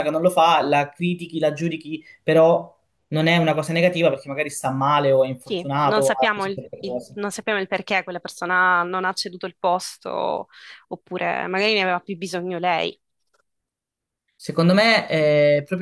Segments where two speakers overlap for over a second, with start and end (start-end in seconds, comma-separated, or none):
5.4-7.2